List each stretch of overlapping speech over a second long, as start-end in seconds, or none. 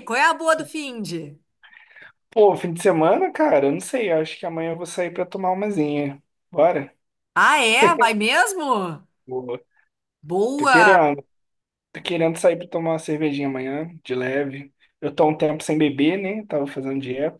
none